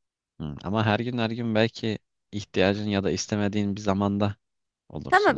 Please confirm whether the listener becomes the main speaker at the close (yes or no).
yes